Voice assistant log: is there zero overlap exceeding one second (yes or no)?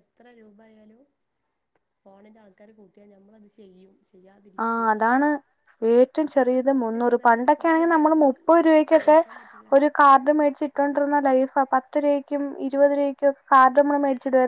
no